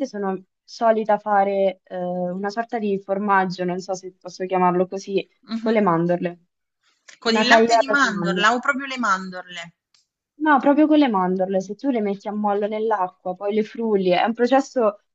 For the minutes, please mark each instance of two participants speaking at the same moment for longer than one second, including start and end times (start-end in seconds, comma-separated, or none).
7.2-8.6